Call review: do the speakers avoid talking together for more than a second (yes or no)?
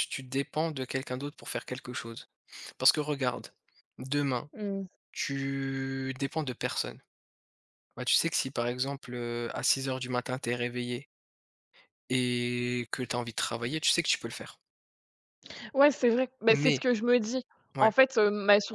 yes